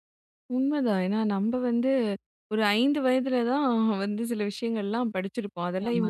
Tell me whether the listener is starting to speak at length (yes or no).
no